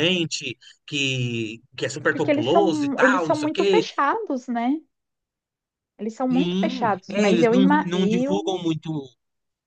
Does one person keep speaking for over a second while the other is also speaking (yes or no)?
yes